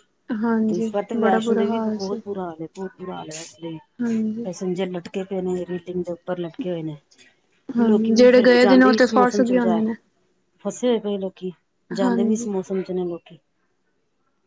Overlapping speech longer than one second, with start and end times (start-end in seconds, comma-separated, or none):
0.7-2.2, 7.8-9.8